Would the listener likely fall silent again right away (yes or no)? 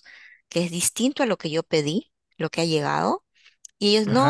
yes